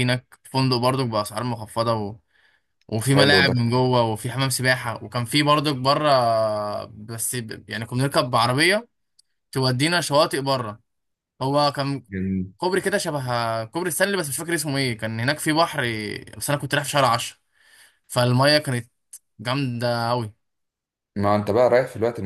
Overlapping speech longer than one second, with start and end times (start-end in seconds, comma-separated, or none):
none